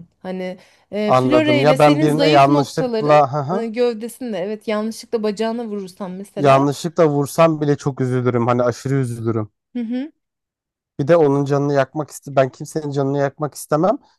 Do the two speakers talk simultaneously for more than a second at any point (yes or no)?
yes